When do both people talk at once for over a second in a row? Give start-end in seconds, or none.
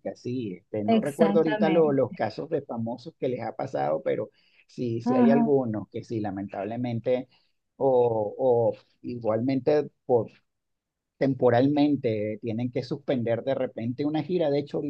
0.9-2.2